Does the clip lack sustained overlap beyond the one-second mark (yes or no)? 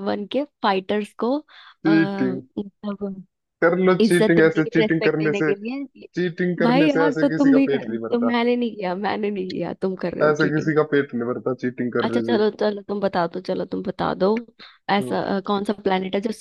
no